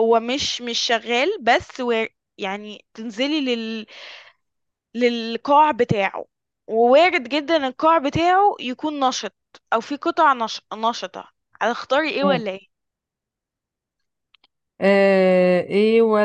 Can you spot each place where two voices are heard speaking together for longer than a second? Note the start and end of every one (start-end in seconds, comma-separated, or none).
none